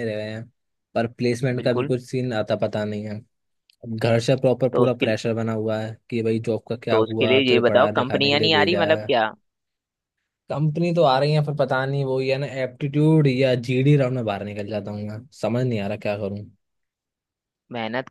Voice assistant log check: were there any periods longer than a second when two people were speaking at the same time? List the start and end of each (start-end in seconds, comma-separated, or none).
6.9-9.1